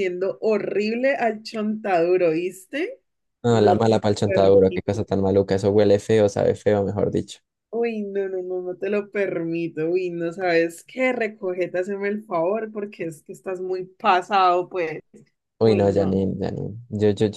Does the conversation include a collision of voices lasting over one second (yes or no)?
yes